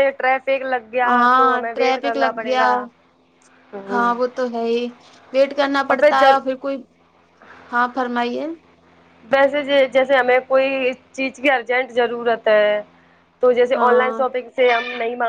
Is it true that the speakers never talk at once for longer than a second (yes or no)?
no